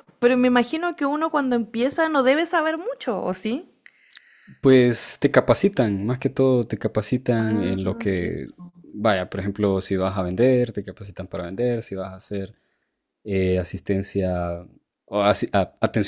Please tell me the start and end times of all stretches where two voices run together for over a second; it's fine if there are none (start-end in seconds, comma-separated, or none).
7.4-8.7